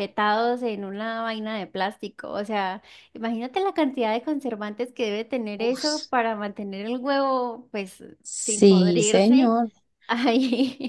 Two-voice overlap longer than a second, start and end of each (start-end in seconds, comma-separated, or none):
8.2-9.6